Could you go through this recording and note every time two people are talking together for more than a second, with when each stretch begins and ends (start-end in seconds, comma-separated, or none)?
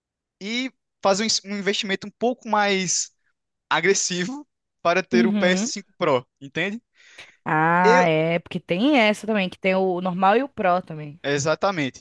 none